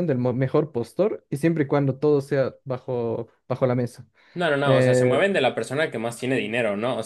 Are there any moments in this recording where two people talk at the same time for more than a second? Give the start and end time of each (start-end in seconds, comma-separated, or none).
none